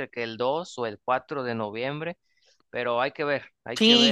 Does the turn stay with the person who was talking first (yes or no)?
no